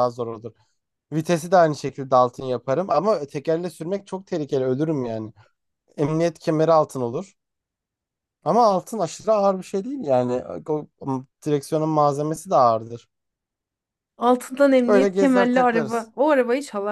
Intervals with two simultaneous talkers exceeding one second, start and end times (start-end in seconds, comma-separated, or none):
14.9-16.1